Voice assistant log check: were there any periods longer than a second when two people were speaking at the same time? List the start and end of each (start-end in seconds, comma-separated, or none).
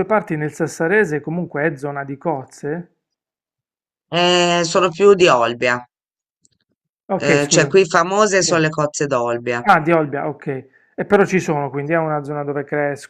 none